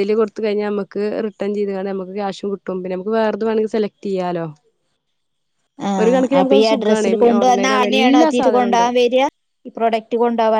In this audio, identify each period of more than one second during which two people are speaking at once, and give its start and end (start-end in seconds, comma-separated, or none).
6.4-8.8